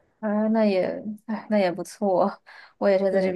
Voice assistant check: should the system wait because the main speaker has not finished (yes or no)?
yes